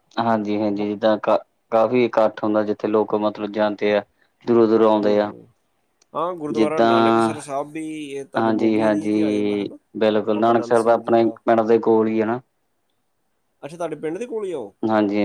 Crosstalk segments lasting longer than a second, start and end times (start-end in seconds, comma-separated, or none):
8.4-9.8